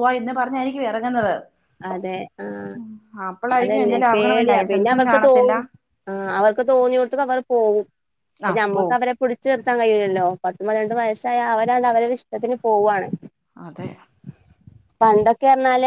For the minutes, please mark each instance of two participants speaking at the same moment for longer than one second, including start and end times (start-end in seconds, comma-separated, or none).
3.6-5.5